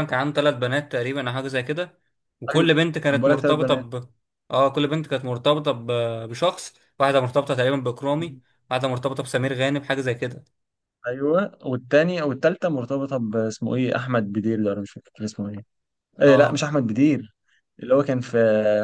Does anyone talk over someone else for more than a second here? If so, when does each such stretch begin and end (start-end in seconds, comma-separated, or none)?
2.5-3.9